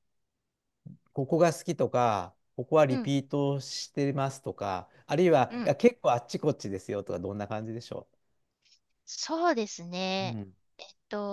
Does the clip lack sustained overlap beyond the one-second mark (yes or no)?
yes